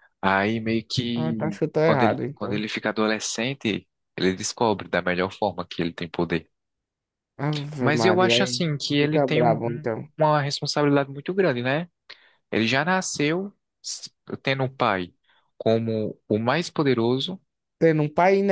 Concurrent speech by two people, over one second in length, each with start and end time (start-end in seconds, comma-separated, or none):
1.1-2.6, 7.8-10.1